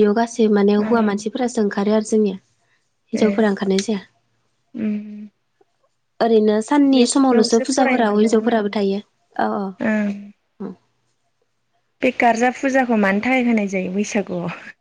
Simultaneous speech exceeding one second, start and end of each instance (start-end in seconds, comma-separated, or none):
7.0-8.6